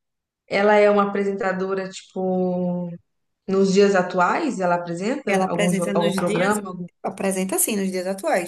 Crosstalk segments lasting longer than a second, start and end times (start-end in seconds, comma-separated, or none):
5.3-6.6